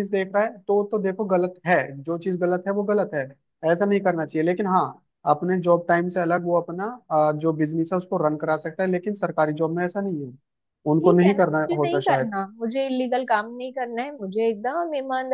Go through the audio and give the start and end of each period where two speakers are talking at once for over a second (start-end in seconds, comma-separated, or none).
11.0-12.3